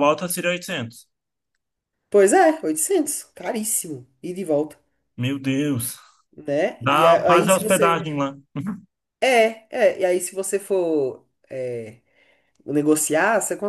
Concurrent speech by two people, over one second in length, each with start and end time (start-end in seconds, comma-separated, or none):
6.8-8.0